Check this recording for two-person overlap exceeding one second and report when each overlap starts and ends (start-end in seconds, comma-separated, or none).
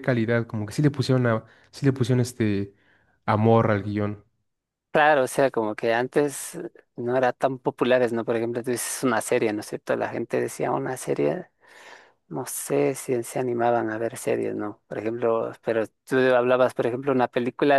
none